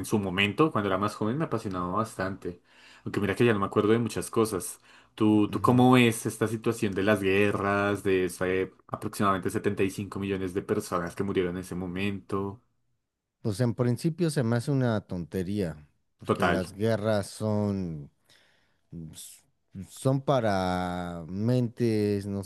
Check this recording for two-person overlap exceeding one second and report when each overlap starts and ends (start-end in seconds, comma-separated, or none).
none